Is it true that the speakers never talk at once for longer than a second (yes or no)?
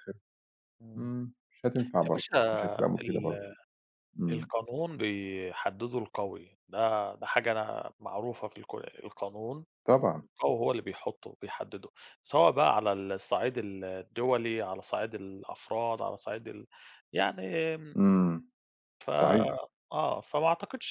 yes